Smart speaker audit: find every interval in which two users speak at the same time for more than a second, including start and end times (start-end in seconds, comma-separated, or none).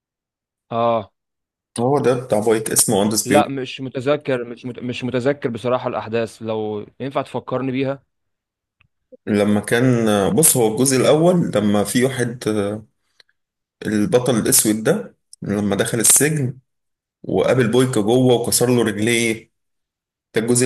none